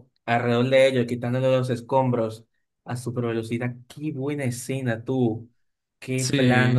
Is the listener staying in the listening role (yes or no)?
yes